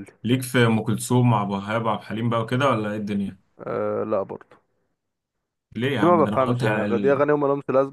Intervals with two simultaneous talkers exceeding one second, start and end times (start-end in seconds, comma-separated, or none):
6.0-7.2